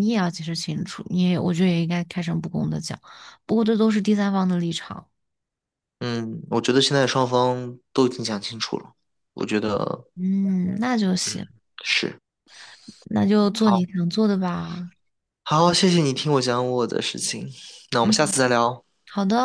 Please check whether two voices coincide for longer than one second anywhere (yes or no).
no